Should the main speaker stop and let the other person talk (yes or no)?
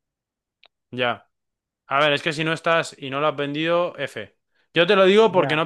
no